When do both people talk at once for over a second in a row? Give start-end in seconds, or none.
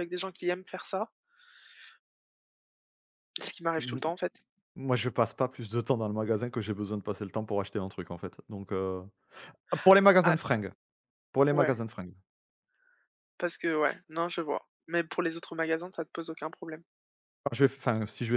none